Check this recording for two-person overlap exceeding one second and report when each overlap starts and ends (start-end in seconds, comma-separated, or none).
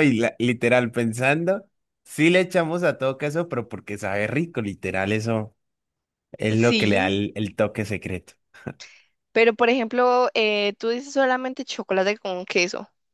none